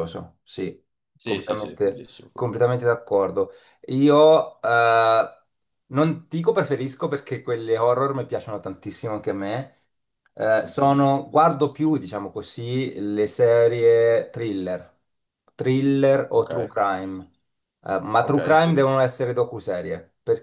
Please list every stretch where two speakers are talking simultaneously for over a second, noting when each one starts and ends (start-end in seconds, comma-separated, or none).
1.2-2.7